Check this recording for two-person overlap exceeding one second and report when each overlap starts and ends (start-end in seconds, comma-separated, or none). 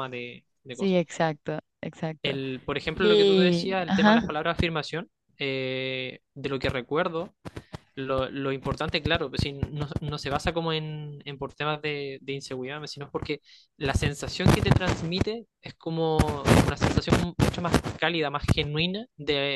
2.9-4.3